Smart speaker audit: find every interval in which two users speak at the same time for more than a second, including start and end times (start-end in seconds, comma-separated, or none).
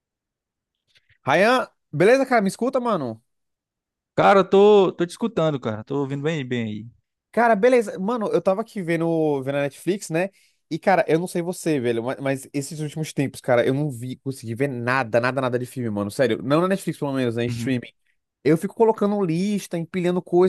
none